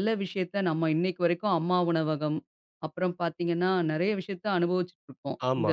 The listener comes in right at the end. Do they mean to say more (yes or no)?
yes